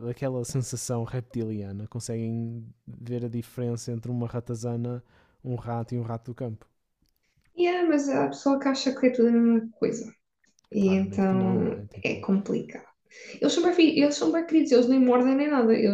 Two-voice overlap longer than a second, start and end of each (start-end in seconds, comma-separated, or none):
10.8-12.2